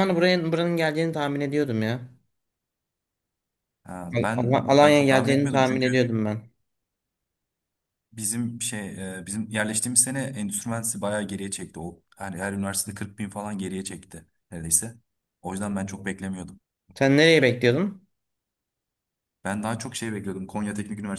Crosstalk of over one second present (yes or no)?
yes